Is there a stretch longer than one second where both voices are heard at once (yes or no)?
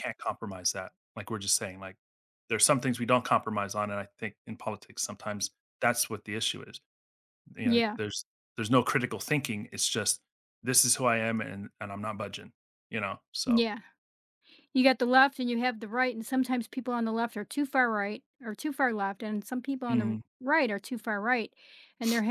no